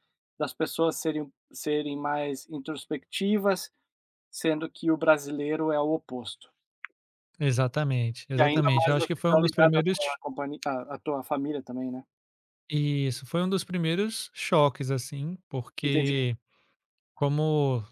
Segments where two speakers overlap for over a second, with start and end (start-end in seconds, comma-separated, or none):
8.4-10.0